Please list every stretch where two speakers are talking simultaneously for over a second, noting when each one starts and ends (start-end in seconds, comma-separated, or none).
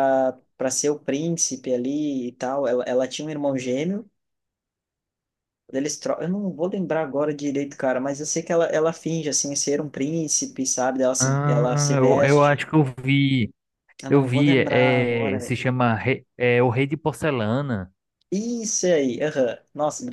11.2-12.6, 14.1-15.5